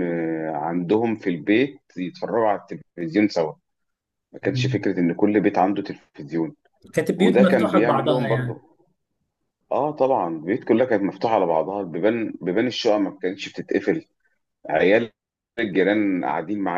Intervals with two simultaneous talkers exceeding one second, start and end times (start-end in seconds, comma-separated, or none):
7.2-8.6